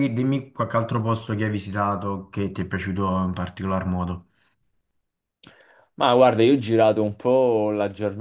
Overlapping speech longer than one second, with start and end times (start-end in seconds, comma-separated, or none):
none